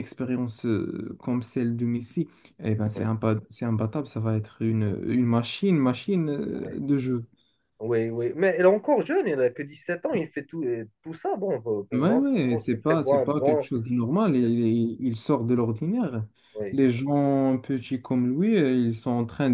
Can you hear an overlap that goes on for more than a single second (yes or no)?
yes